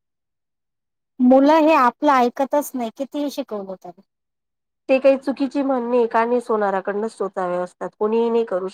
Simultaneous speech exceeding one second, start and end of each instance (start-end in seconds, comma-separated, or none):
none